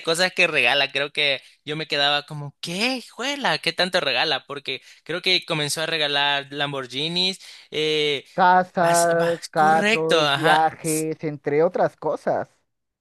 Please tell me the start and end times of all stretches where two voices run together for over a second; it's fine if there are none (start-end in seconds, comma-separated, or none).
8.8-10.6